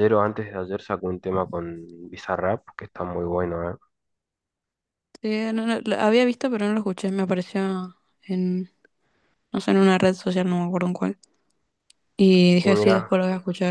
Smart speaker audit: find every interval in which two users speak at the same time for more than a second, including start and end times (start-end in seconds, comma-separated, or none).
none